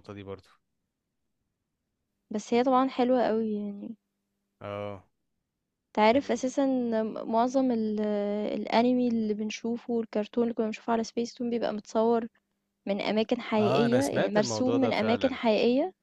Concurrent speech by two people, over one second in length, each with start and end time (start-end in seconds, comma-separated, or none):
13.6-15.4